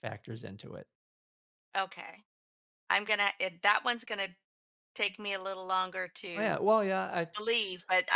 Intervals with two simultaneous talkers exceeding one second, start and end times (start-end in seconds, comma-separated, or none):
none